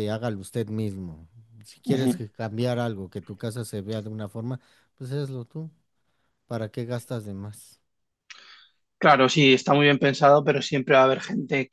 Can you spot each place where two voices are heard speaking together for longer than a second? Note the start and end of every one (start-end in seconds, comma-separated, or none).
none